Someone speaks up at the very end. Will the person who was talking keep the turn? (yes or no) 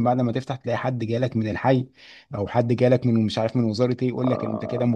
yes